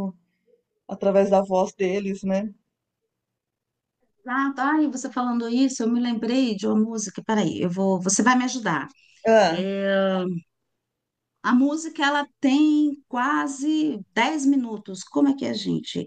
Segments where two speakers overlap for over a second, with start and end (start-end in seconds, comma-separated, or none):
none